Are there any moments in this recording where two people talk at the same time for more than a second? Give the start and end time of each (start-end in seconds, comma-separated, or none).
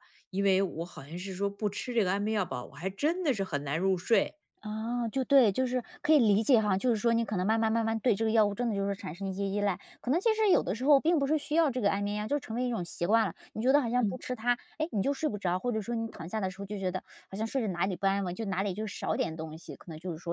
none